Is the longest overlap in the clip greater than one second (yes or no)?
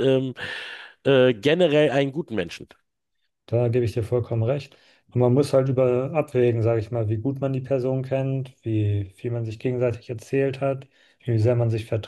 no